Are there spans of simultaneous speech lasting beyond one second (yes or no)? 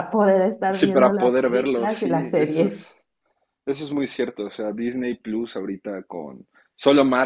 yes